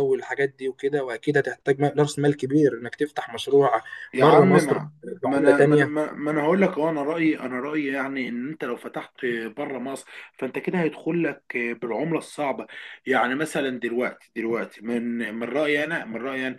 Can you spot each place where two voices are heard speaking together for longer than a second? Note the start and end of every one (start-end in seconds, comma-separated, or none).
4.2-5.9